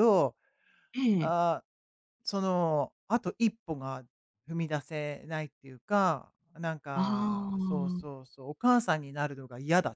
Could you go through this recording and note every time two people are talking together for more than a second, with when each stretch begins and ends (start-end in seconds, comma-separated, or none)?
7.0-8.2